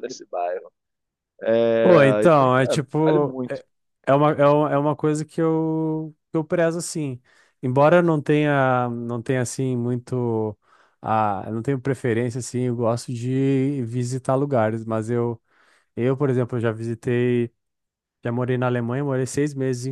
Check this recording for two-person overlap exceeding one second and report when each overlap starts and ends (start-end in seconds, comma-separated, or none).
1.8-3.6